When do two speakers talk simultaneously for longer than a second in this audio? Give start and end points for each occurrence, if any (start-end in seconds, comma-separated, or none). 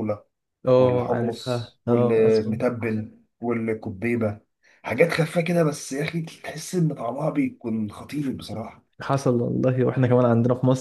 0.8-2.5